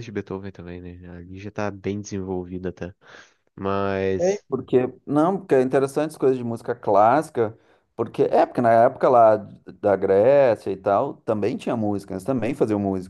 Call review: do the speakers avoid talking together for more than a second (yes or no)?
yes